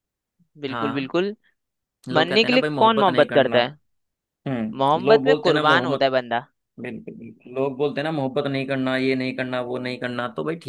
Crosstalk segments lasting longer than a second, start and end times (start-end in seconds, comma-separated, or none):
2.1-3.6, 4.8-6.1